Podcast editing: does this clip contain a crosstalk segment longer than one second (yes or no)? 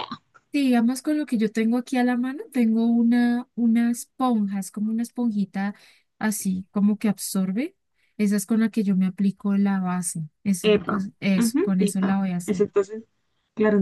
yes